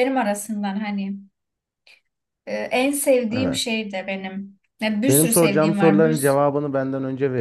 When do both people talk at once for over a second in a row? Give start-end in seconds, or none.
5.1-6.3